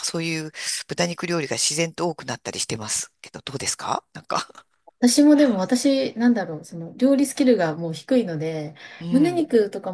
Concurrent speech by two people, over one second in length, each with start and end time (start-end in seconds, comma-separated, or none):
none